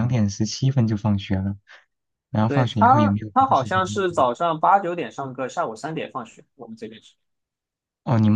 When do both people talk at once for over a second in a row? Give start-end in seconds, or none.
2.5-4.2